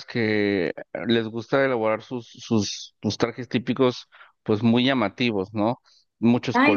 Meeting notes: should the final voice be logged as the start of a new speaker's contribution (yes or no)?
yes